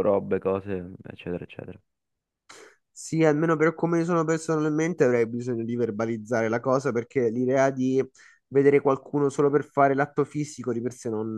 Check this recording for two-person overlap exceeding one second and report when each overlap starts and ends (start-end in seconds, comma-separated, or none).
none